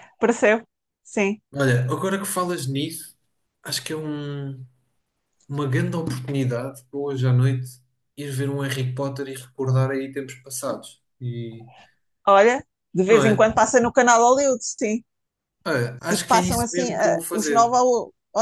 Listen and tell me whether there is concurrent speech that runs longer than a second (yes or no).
yes